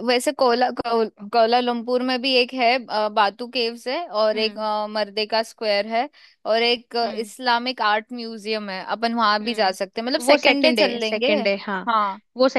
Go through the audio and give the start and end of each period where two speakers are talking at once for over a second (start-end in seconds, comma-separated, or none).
9.4-11.3